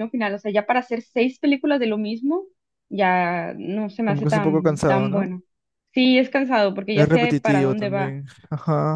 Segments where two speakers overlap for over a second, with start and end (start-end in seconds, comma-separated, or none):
4.0-5.2, 6.9-8.2